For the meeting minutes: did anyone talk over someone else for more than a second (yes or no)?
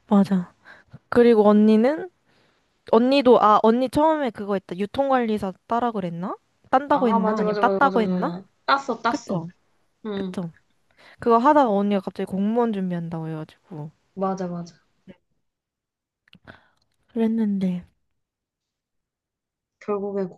yes